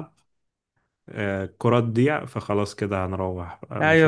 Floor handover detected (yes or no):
yes